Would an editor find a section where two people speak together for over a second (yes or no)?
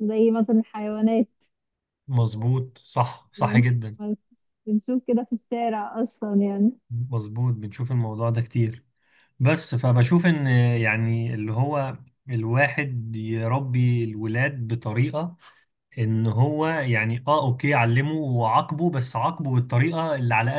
no